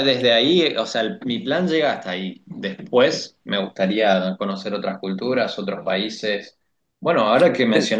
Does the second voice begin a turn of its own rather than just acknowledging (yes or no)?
no